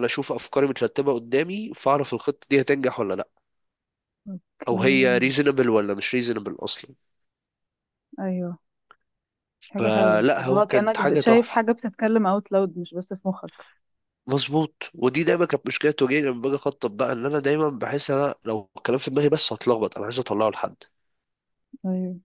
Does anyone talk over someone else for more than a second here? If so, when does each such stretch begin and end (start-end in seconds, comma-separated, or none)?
9.8-11.6